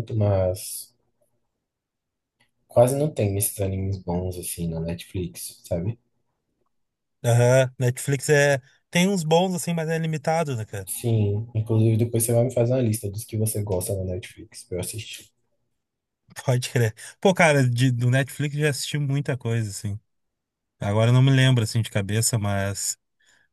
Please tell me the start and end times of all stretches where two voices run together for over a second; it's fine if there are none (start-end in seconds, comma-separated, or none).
none